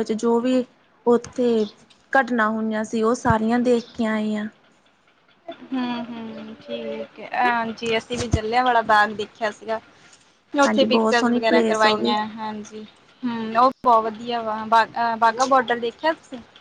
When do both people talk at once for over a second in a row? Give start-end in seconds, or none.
10.7-12.1